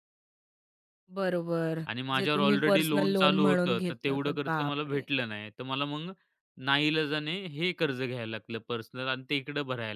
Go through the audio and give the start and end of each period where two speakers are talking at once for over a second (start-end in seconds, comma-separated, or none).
2.2-5.0